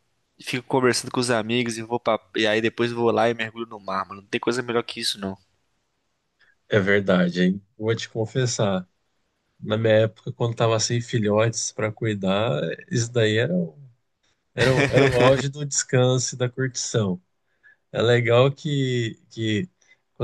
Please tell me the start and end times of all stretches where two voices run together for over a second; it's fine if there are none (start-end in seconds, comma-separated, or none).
none